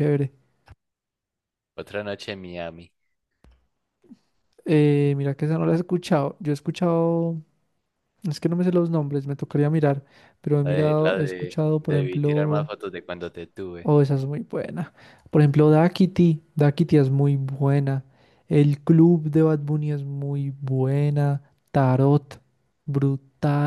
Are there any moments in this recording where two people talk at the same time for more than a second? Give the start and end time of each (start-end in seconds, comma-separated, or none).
10.6-12.7